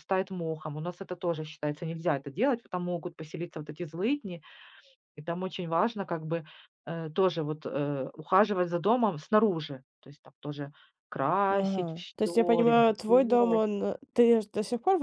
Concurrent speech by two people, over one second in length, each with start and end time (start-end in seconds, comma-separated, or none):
11.5-13.6